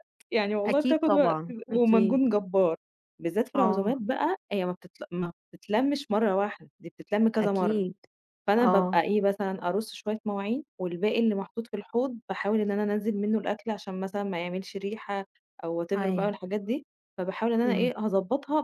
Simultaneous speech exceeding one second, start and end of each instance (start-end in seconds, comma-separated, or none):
0.7-2.2